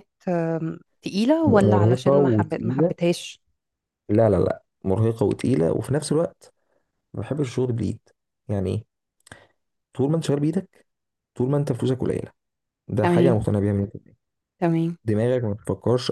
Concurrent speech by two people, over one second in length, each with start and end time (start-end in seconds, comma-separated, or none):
1.4-3.0